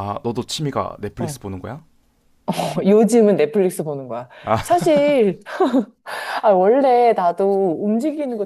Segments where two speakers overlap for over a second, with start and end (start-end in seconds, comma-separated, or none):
none